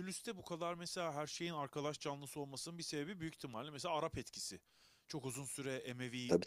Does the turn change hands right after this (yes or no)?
no